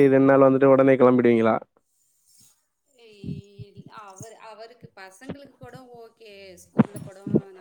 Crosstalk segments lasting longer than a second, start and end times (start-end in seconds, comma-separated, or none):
none